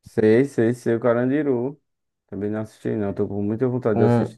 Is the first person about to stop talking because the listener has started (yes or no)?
yes